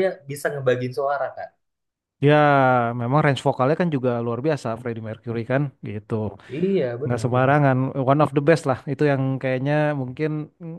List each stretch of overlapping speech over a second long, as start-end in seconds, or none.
none